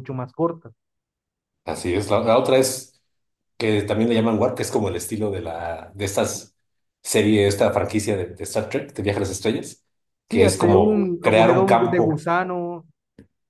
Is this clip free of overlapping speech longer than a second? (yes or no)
no